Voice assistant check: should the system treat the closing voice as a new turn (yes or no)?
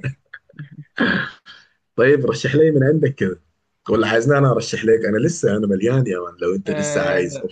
yes